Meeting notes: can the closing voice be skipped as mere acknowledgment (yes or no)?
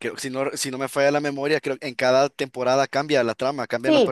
no